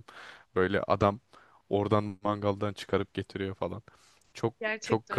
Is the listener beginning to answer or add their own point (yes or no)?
yes